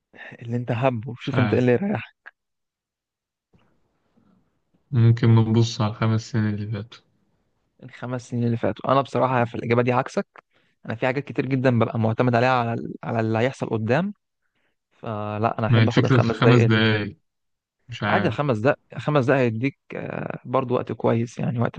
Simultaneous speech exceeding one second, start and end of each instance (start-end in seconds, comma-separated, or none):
15.7-16.9